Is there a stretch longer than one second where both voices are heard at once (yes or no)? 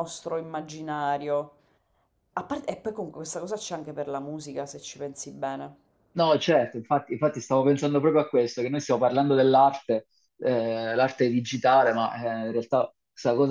no